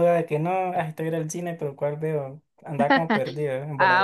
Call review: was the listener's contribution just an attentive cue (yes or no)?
no